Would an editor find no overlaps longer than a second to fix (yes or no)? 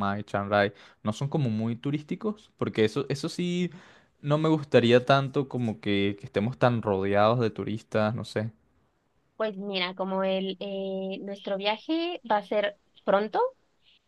yes